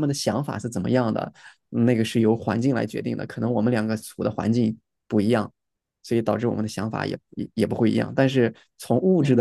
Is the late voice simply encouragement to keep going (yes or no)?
yes